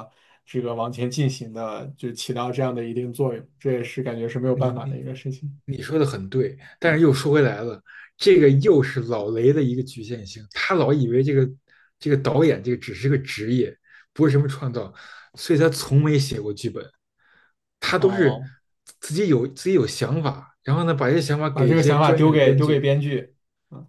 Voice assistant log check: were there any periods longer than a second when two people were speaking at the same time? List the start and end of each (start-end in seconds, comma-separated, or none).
21.5-22.9